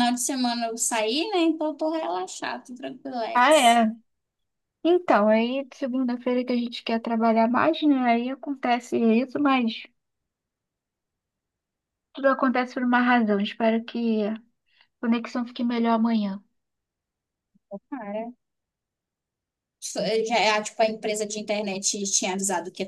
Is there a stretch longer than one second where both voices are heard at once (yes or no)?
no